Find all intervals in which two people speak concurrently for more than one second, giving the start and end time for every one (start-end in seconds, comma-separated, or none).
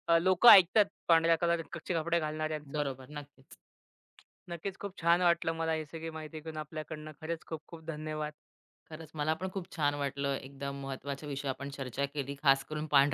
none